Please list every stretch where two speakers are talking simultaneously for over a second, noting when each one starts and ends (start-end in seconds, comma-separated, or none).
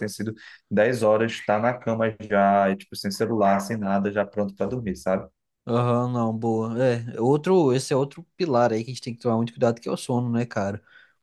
none